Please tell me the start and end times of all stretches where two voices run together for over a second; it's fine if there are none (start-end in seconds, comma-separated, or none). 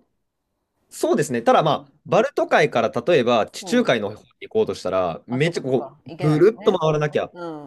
5.3-6.8